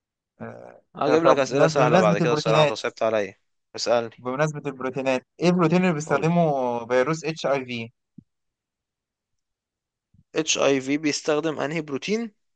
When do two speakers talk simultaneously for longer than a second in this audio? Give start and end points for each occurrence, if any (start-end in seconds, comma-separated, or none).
1.2-2.7